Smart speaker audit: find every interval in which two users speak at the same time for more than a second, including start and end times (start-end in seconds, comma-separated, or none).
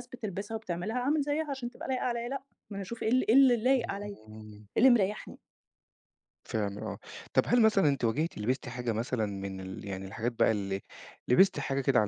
none